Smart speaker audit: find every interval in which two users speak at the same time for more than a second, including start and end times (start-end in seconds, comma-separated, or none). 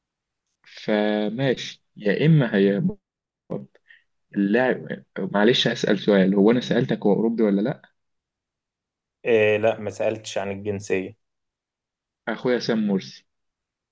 none